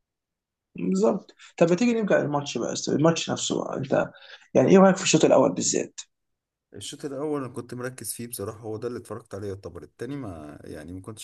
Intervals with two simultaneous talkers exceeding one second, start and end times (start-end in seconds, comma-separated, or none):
none